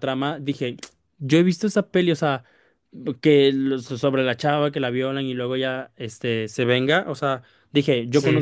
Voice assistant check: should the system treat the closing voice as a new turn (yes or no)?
no